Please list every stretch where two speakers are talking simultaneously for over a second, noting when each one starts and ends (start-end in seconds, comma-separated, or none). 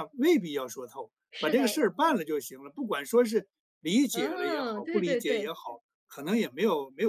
4.1-5.5